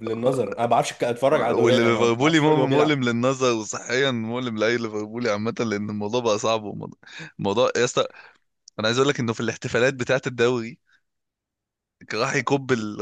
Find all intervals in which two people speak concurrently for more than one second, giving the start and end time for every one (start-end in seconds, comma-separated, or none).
1.3-3.0